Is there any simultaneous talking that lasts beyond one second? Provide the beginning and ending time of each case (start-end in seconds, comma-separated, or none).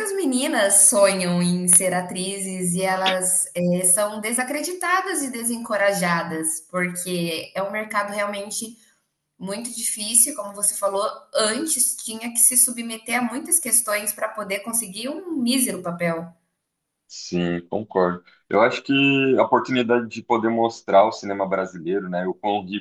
none